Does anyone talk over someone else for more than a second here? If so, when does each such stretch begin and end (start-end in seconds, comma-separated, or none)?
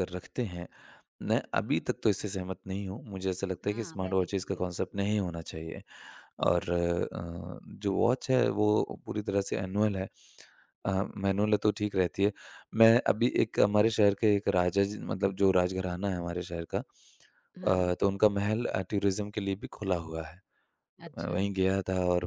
3.6-5.0